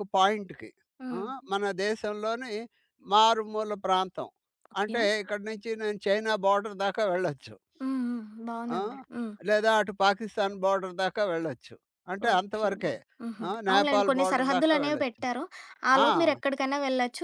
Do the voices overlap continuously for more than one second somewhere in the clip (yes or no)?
yes